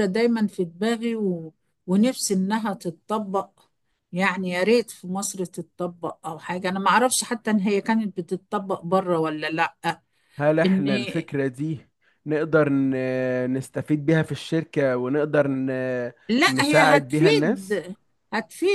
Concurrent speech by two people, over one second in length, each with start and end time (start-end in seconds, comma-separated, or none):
16.5-17.9